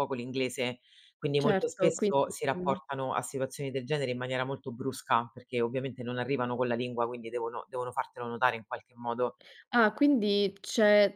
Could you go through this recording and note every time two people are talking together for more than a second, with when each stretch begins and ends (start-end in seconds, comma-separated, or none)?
1.4-2.8